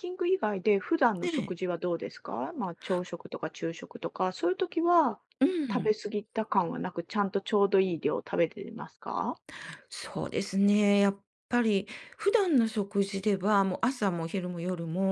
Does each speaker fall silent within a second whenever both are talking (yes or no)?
yes